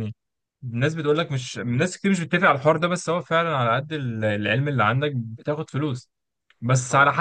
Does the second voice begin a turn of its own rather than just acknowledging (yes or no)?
no